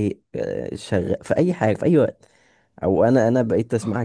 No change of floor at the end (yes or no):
yes